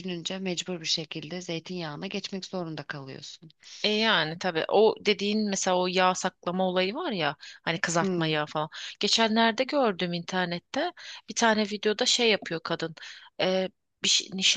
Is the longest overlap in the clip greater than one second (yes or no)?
no